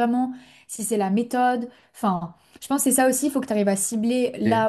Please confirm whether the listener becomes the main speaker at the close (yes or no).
no